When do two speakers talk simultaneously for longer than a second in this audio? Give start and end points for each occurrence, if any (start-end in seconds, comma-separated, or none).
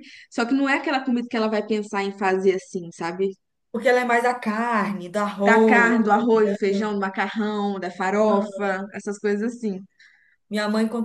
5.4-6.9